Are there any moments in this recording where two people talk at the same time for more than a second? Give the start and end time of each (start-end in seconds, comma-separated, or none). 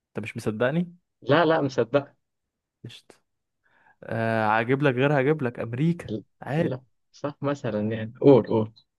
none